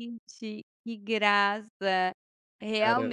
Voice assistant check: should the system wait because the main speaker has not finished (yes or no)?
yes